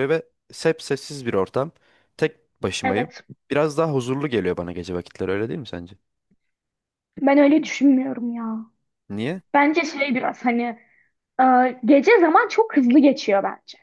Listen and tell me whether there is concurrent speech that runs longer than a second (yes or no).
no